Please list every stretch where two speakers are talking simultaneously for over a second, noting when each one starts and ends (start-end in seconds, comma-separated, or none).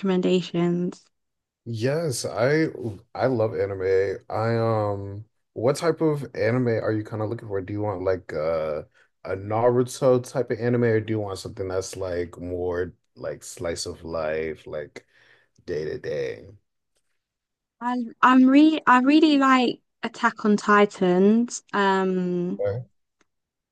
none